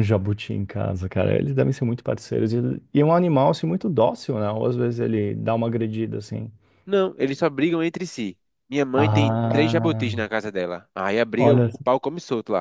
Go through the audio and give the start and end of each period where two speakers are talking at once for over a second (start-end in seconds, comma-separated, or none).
8.9-10.1